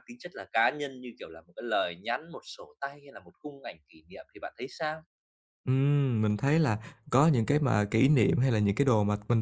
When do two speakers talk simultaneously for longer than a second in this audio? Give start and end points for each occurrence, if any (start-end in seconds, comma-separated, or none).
none